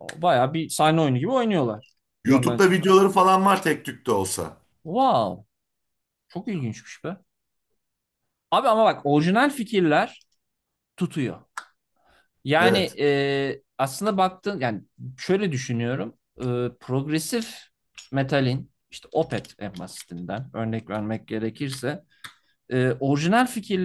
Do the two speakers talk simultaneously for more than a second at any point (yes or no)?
no